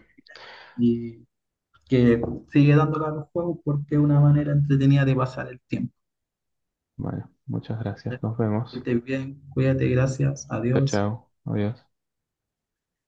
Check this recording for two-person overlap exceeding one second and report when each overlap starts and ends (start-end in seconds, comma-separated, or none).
none